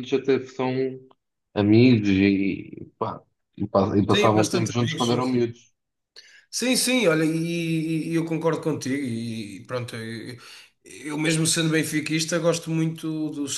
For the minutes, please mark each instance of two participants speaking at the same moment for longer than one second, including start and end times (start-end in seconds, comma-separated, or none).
4.1-5.4